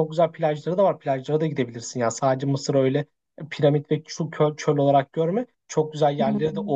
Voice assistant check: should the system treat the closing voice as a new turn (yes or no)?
no